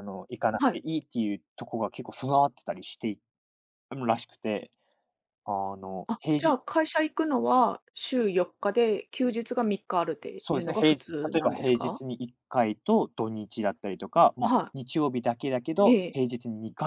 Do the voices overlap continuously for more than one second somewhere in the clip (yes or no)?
yes